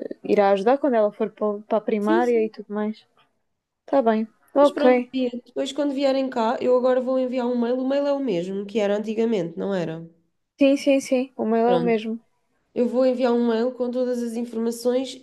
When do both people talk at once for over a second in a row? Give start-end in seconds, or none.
none